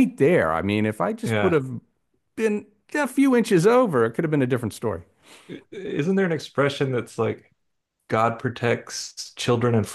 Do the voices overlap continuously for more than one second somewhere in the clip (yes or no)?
no